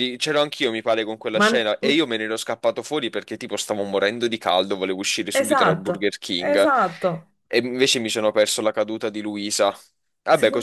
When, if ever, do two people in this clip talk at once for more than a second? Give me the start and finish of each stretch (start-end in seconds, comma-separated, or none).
5.4-6.7